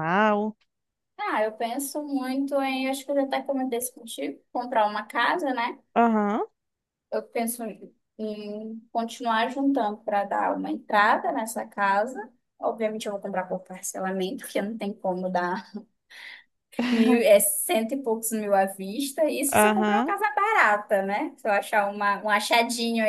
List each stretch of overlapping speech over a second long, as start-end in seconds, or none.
none